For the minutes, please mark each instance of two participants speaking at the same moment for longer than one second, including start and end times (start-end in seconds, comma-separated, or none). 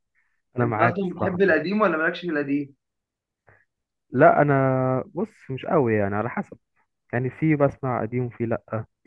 0.6-1.8